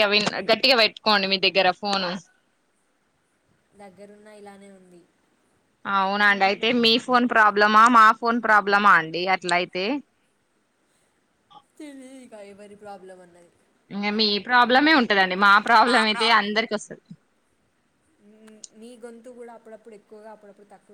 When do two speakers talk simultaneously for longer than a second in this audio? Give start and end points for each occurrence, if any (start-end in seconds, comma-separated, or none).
none